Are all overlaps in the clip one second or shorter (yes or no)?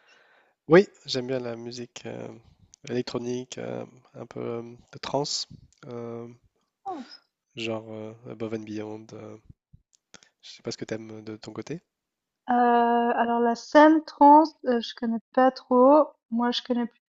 yes